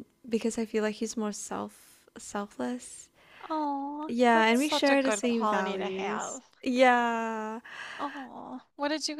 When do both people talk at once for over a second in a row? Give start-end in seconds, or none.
4.1-6.4